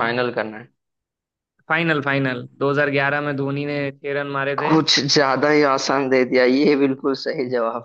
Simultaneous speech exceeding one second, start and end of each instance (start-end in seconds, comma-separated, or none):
none